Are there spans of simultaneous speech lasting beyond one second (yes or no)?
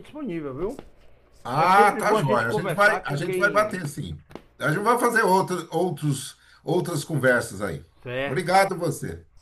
yes